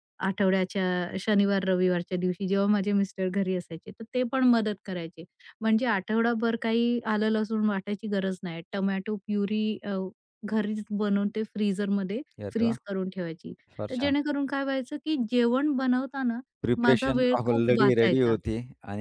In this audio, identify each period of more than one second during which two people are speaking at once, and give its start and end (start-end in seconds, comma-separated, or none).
16.8-18.4